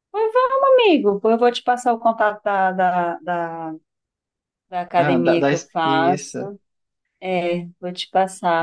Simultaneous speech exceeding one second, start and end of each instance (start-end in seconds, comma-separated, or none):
5.0-6.4